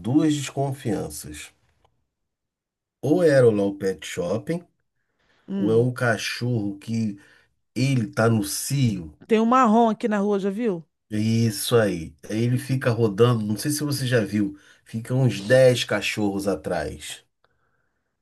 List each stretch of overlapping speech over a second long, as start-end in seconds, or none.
none